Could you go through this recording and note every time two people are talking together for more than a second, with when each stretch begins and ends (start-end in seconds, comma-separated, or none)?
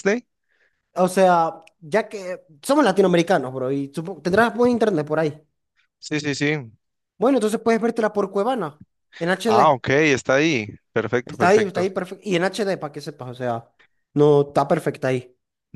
none